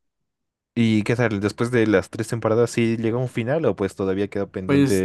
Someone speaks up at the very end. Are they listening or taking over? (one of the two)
taking over